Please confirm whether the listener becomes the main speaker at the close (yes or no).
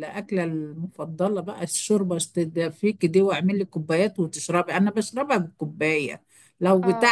no